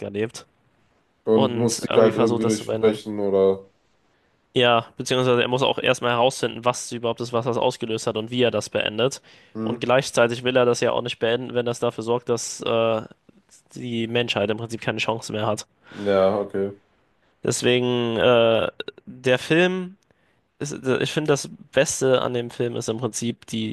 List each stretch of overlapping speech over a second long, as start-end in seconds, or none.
1.3-3.0